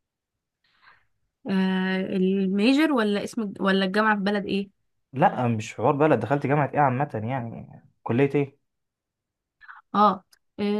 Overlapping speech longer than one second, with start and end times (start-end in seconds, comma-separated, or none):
none